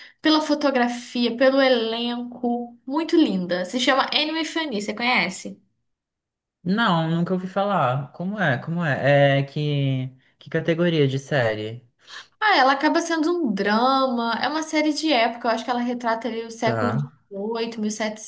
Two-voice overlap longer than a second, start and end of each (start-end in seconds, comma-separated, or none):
none